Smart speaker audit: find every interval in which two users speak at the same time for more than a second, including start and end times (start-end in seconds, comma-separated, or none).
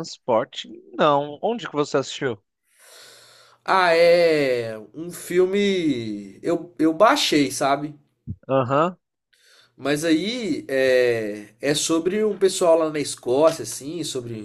none